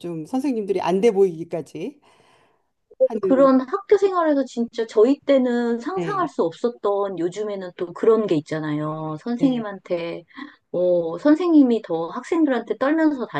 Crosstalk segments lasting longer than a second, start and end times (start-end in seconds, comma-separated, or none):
none